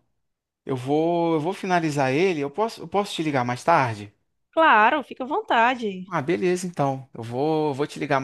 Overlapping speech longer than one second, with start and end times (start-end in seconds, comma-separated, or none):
none